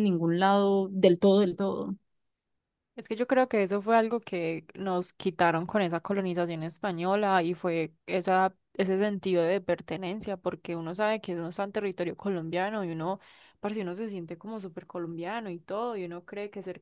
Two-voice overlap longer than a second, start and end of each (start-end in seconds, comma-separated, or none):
none